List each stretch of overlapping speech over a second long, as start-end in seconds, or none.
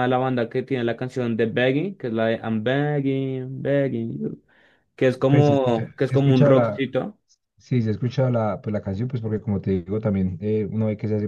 5.3-6.8